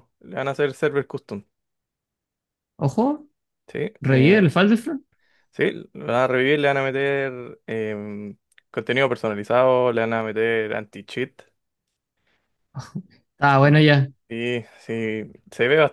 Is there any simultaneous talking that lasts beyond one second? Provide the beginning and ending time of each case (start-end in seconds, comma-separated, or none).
none